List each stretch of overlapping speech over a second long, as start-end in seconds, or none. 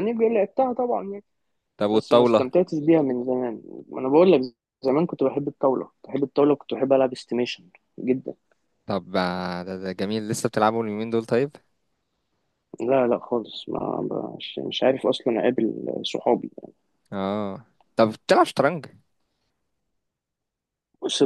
none